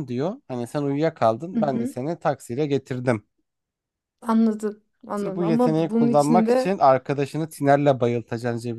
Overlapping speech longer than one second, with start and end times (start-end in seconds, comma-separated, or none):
5.1-6.8